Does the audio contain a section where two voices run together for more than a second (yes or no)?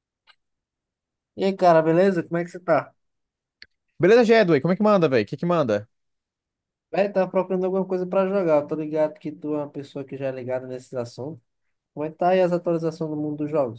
no